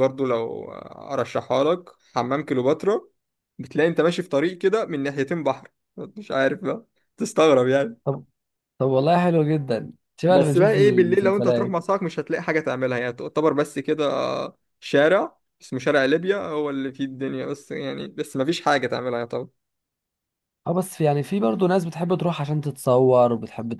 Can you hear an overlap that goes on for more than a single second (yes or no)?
yes